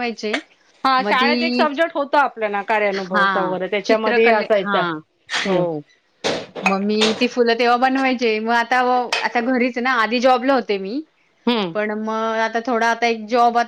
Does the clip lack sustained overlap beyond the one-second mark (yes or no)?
no